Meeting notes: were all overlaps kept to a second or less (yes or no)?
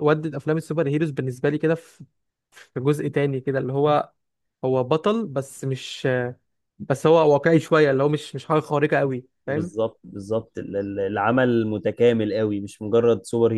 yes